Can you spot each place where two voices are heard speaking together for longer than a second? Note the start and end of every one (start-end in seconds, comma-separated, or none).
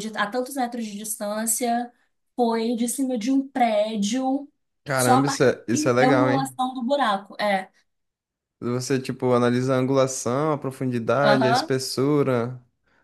4.9-6.5